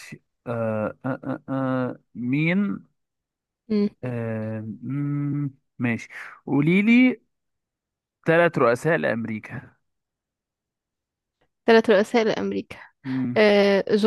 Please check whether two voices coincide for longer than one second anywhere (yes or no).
no